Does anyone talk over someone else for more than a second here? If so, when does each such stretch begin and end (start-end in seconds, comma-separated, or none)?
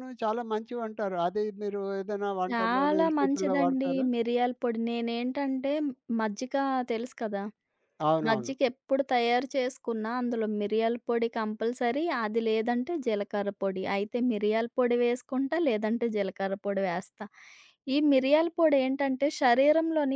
2.5-4.0